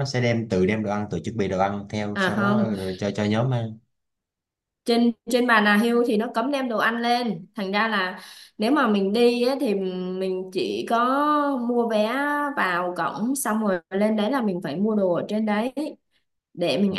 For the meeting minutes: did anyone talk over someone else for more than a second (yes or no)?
no